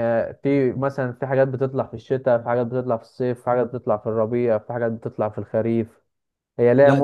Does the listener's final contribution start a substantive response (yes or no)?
no